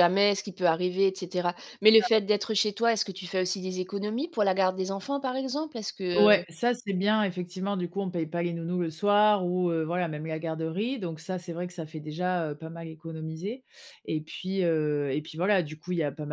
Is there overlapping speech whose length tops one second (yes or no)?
no